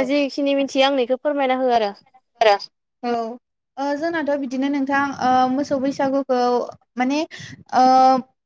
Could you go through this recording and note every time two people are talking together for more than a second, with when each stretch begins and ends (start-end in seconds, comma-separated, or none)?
none